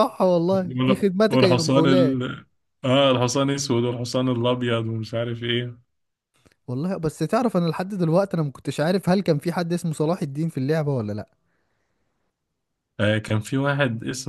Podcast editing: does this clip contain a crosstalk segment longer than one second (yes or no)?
yes